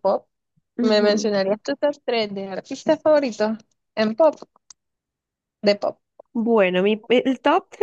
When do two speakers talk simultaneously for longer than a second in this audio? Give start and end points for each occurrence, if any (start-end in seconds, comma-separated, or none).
none